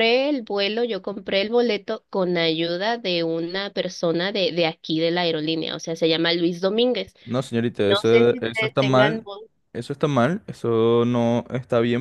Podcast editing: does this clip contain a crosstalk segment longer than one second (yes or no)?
yes